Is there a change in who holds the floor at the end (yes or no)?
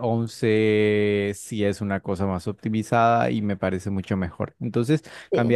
no